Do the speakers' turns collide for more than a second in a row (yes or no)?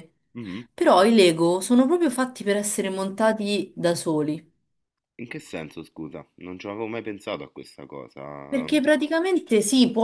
no